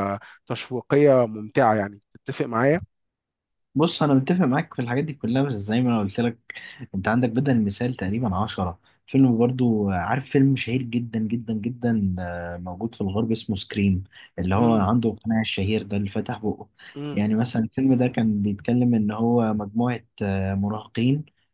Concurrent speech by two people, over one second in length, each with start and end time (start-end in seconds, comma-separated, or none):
none